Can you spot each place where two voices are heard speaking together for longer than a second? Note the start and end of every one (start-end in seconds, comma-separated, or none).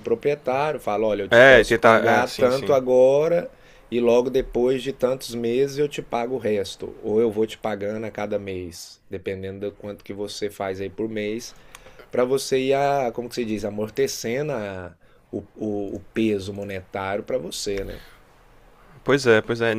1.3-2.8